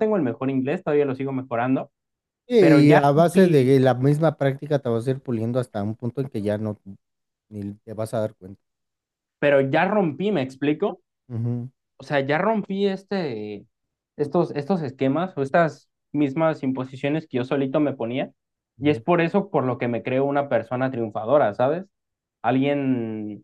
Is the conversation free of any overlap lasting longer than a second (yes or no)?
no